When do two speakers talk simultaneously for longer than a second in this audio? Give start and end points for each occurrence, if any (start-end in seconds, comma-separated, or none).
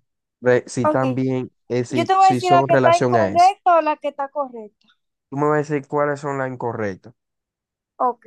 1.9-3.5